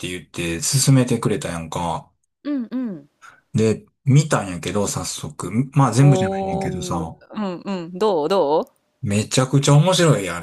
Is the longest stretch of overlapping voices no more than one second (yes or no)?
no